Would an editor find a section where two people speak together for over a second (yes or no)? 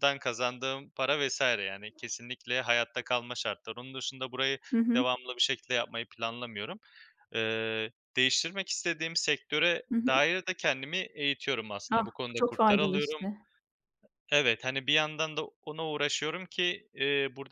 yes